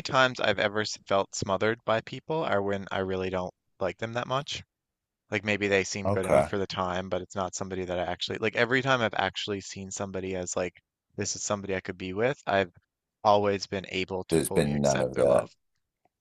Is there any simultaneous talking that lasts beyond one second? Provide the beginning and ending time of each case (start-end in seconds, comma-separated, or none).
14.3-15.5